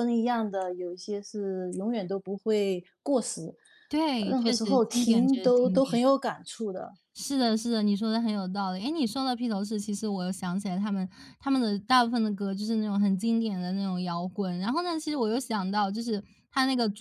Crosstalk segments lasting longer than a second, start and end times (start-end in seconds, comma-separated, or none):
4.3-6.0